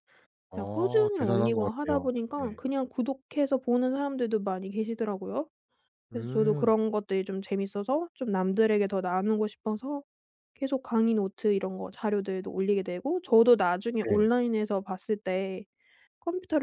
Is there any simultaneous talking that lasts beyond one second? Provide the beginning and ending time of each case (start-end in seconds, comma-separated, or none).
0.5-2.6